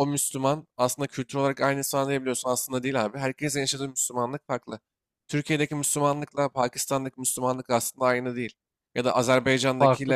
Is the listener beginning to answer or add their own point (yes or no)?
no